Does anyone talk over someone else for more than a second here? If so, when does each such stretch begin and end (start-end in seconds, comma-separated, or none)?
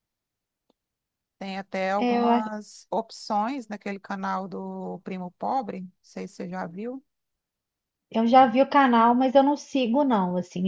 none